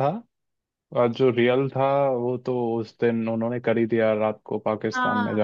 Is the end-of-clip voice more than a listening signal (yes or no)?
yes